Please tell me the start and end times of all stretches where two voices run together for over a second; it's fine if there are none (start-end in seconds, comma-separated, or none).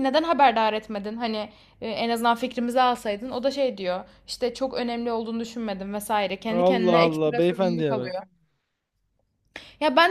6.5-8.2